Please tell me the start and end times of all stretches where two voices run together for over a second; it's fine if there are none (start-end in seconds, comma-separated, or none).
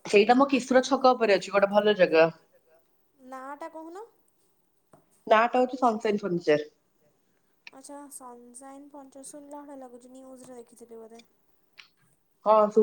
none